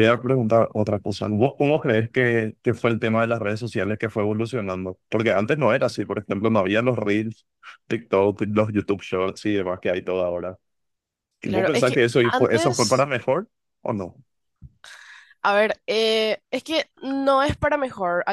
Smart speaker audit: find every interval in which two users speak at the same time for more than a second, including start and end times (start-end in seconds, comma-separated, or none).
11.4-13.1